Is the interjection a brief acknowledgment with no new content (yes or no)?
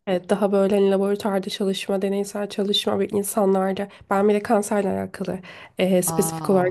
yes